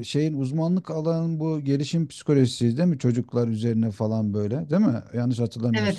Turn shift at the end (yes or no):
yes